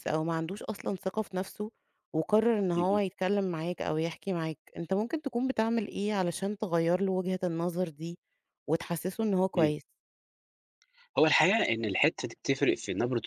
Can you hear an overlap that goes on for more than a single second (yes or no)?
no